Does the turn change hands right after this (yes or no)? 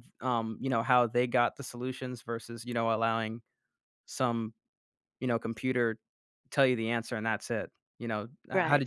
yes